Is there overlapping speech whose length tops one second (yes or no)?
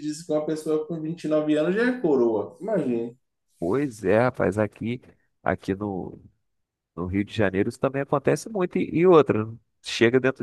no